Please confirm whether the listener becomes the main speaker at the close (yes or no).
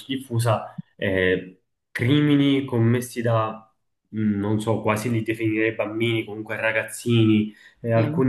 no